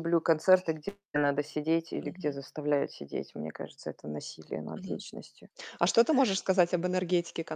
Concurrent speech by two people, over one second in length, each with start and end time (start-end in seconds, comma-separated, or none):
none